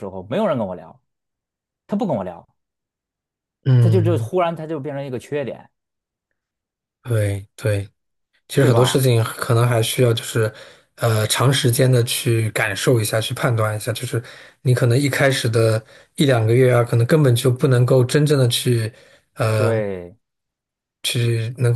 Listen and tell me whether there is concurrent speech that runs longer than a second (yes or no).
no